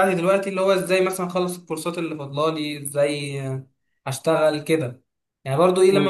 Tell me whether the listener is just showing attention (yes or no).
yes